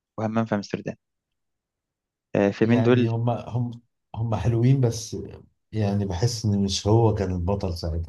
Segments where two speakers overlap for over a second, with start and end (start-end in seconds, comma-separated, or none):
none